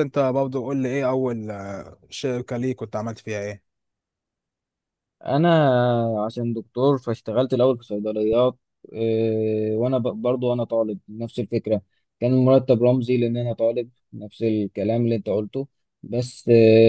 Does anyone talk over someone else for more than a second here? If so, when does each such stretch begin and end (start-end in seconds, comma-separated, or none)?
none